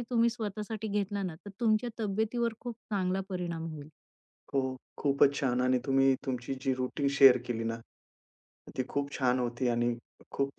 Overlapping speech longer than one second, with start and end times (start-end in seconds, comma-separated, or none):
none